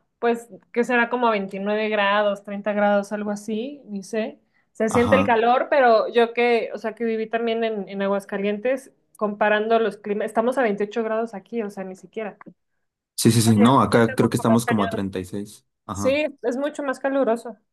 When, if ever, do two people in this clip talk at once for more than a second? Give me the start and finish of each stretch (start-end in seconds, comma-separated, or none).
13.4-15.0